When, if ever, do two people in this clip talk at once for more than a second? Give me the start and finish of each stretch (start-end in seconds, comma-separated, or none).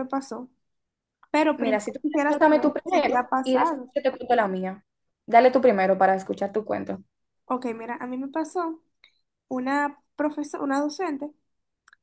1.6-3.9